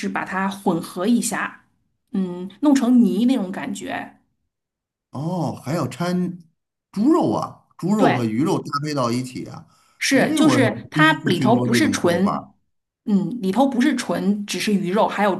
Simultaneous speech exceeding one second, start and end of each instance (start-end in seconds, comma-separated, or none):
10.1-12.4